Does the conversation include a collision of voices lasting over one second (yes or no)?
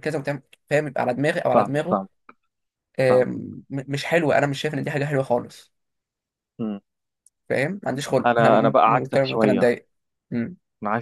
yes